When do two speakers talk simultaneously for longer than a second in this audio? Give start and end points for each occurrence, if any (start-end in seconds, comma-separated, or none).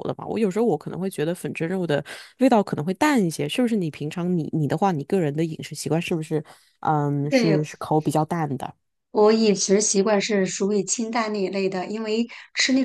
none